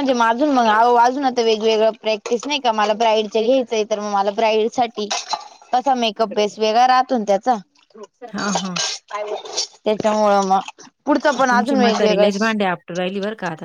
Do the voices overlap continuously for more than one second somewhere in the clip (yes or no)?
no